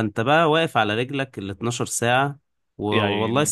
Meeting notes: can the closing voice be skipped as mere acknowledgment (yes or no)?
yes